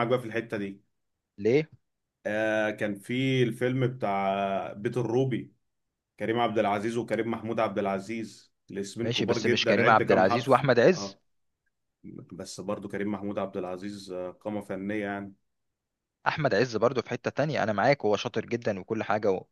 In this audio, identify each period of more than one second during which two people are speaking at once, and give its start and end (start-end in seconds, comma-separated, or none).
9.0-11.2